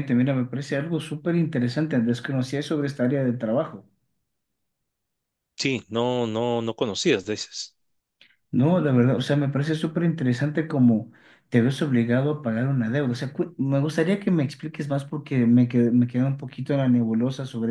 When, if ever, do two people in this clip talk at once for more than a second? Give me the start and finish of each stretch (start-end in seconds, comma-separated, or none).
none